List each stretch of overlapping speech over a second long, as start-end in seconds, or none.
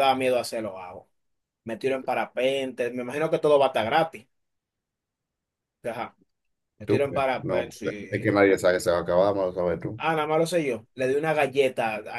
6.8-8.3